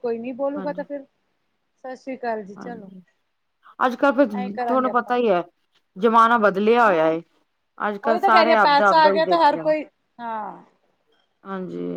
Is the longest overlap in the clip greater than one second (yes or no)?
yes